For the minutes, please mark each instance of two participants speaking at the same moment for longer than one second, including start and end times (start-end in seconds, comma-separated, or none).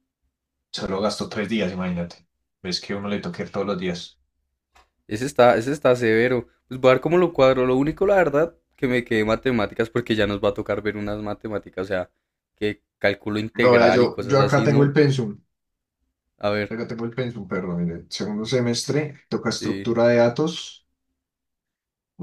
13.6-14.9